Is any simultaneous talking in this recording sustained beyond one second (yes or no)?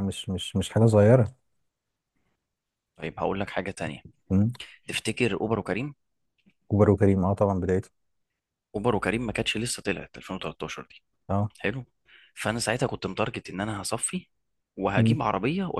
no